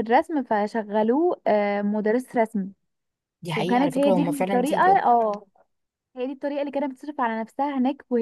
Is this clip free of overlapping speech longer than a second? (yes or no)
no